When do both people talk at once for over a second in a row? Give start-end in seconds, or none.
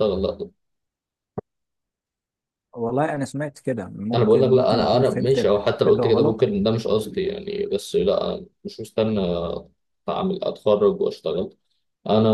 4.1-6.5